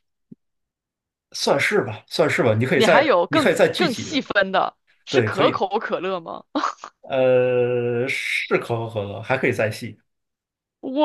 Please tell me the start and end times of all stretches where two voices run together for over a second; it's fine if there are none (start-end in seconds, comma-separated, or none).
2.7-4.3